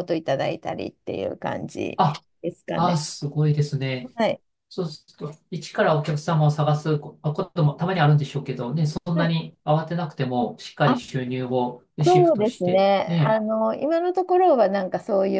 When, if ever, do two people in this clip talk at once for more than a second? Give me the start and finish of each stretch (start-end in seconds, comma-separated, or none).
12.0-13.4